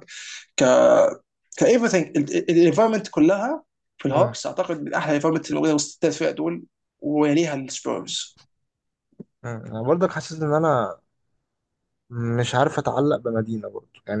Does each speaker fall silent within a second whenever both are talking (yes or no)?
yes